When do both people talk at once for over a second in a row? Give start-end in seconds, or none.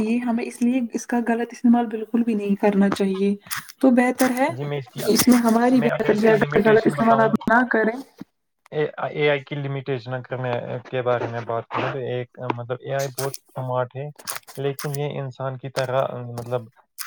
5.8-7.3